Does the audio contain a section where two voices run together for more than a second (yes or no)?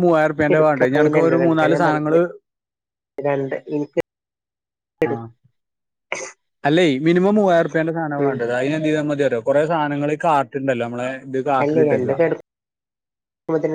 yes